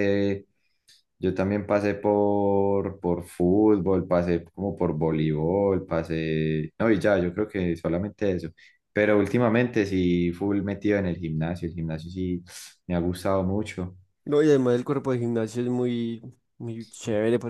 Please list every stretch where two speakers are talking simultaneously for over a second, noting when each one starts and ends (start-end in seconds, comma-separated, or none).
none